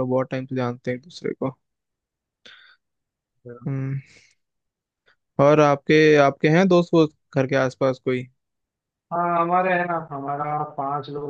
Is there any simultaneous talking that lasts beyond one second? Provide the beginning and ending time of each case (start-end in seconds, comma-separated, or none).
none